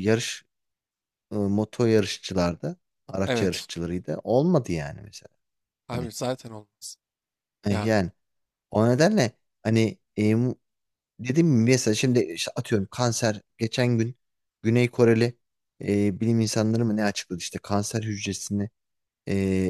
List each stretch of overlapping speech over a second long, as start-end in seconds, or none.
none